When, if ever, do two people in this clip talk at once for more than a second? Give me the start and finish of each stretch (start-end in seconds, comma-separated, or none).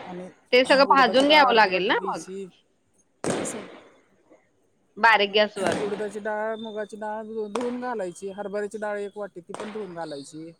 0.9-2.2